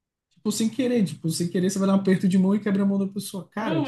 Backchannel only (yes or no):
yes